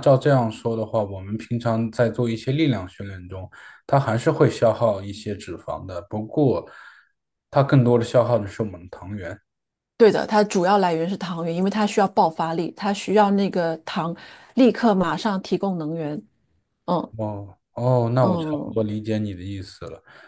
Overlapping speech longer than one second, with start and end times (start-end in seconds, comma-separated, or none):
none